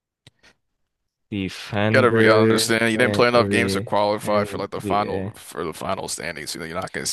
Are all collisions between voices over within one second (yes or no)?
no